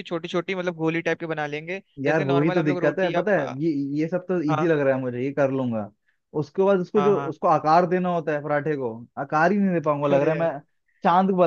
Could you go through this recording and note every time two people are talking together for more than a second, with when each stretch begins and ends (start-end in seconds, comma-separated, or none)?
2.0-3.5